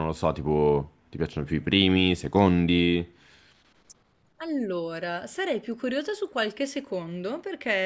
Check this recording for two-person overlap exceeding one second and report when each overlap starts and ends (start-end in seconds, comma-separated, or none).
none